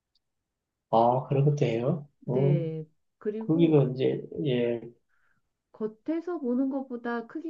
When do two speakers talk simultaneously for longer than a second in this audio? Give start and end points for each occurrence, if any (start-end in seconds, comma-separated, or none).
none